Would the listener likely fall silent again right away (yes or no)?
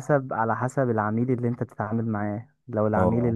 yes